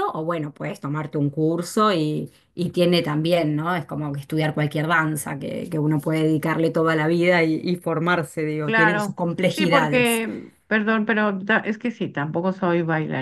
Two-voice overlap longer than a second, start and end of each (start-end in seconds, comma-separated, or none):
8.7-10.2